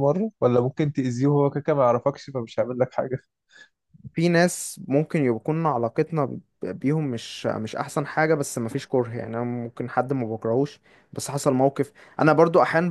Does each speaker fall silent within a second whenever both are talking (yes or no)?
yes